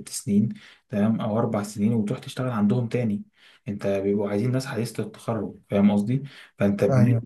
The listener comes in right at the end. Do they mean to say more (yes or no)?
no